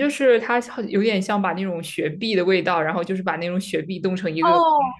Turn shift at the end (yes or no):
yes